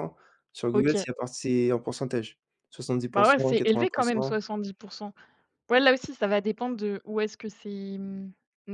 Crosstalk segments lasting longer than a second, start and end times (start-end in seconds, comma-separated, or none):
3.1-4.4